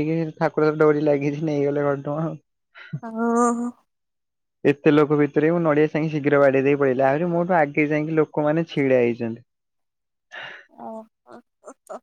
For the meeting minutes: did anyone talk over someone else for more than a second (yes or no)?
no